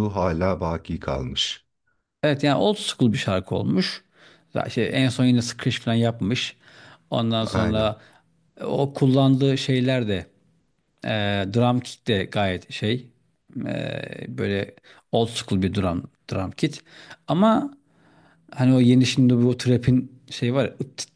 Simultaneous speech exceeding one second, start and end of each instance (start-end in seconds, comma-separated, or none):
none